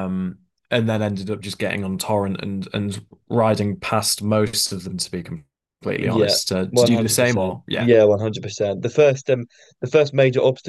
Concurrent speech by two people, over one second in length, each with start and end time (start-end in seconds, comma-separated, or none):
6.0-7.9